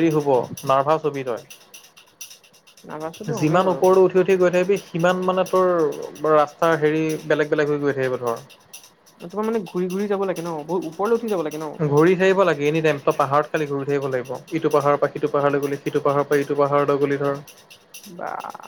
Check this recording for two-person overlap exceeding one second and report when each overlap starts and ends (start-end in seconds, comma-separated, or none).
none